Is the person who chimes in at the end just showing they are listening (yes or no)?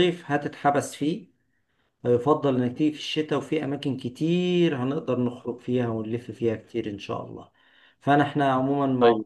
yes